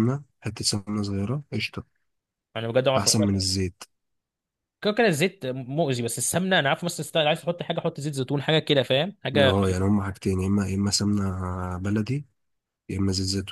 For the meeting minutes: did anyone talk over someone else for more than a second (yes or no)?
no